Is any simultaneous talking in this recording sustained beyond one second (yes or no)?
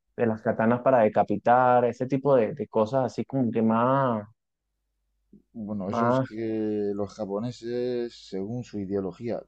no